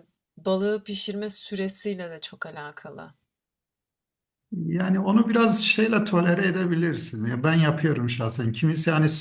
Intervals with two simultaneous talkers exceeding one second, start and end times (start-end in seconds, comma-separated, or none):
none